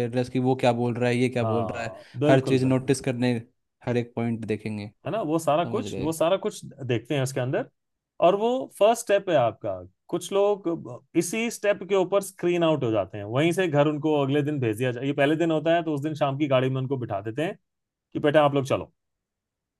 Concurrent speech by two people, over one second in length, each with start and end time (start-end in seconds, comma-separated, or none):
1.4-2.9